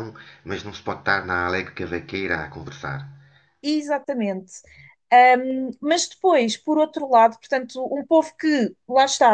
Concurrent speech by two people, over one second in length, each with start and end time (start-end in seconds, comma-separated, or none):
none